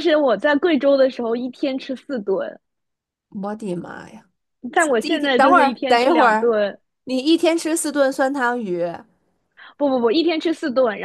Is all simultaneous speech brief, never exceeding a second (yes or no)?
no